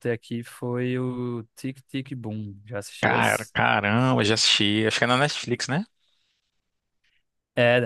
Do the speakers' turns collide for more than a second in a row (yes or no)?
no